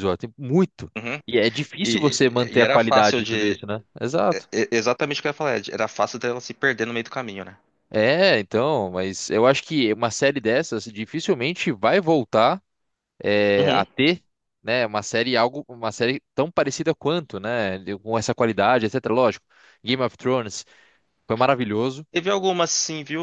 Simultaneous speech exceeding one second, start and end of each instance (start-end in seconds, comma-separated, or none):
1.8-3.5